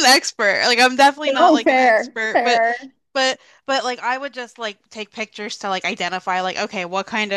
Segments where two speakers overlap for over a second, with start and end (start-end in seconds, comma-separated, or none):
1.4-2.6